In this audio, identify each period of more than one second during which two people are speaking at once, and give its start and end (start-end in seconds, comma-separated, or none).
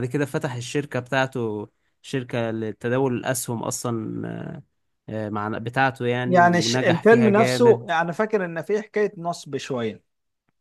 6.2-7.9